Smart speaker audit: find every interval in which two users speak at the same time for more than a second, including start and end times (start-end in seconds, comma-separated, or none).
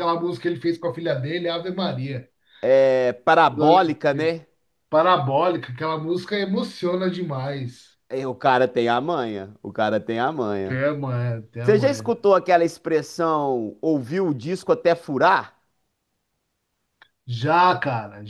none